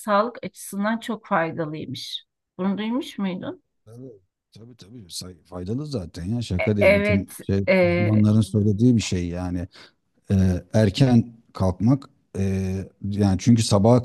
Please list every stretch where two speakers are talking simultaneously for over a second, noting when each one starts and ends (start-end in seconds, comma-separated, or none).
6.6-8.3